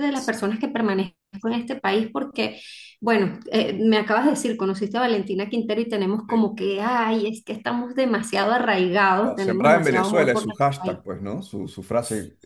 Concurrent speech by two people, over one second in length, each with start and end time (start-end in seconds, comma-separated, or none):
9.2-11.0